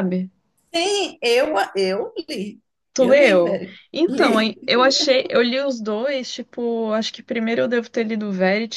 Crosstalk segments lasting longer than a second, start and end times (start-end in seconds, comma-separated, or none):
3.0-4.7